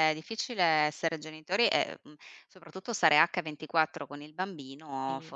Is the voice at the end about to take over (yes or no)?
no